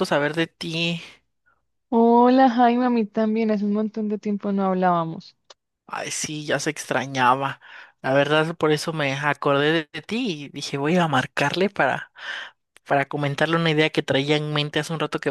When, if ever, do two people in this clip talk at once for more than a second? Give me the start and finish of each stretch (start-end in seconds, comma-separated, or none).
none